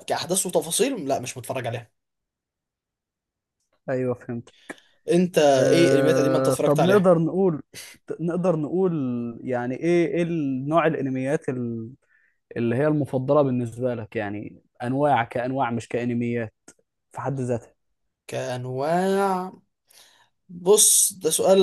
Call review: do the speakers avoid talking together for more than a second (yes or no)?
no